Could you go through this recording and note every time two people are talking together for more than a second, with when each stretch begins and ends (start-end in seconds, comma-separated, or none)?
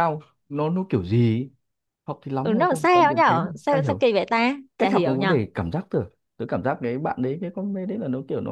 2.4-4.0